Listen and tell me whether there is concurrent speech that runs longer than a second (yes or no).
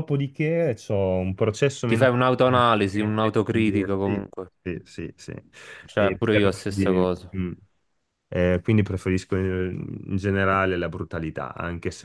yes